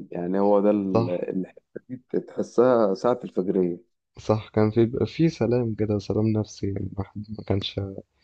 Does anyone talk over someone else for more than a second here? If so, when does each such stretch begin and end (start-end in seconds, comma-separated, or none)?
none